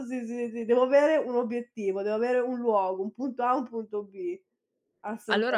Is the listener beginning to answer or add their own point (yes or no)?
yes